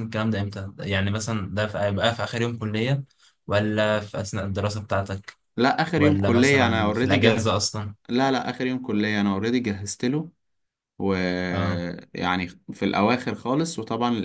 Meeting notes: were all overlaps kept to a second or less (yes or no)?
no